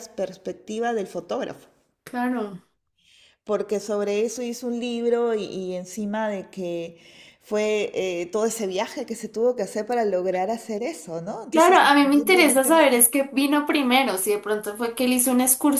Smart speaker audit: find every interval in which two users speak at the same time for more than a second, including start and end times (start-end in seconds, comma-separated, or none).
11.5-13.1